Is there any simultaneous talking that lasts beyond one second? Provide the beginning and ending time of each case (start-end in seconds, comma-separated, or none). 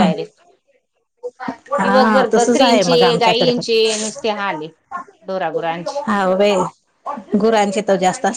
1.8-3.9